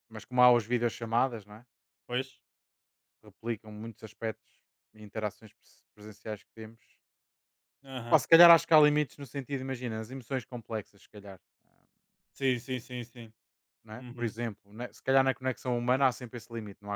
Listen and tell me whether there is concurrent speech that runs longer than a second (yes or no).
no